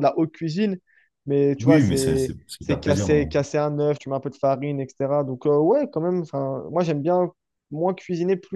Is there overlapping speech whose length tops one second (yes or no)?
yes